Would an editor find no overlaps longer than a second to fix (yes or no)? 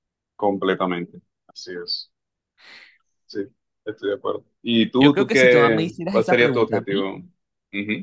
no